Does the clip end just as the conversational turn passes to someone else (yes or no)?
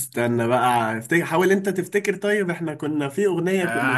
yes